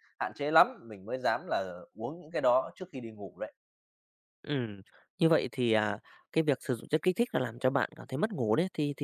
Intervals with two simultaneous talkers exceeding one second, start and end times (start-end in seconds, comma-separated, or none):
none